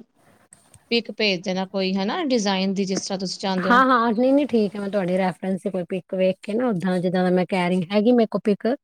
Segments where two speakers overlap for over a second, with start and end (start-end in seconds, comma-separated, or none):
none